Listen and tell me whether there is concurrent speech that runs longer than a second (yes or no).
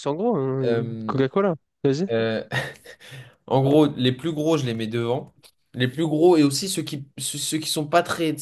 no